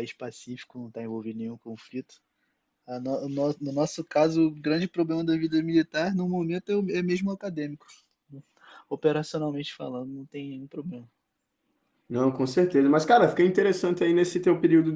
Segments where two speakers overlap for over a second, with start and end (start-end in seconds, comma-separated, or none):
none